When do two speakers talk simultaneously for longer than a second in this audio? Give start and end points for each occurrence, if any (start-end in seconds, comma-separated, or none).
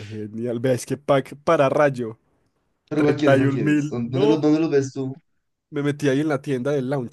2.9-4.3